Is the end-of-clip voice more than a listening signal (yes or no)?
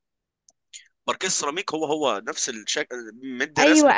yes